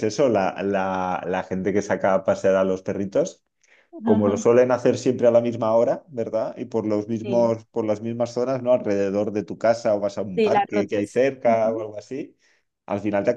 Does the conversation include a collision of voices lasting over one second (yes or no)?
yes